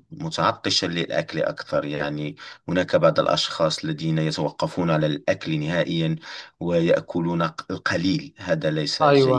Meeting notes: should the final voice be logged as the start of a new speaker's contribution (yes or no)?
yes